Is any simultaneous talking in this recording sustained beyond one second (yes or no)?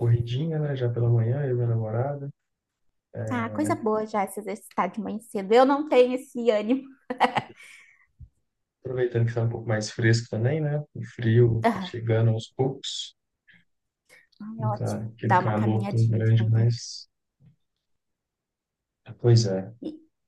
yes